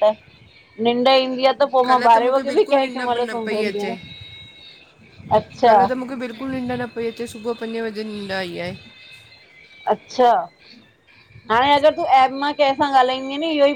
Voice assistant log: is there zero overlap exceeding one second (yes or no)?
no